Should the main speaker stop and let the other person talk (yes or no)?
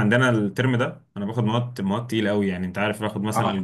yes